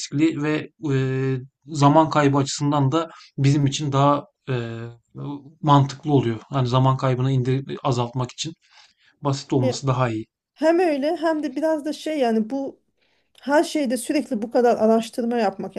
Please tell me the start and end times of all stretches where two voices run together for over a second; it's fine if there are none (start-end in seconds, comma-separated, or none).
none